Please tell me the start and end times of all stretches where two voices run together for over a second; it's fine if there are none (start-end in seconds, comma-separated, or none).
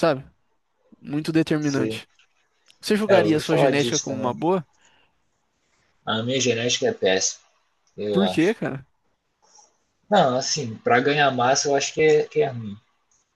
3.1-4.3